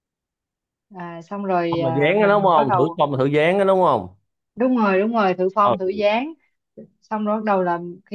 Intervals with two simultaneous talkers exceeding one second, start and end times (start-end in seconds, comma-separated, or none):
1.7-3.0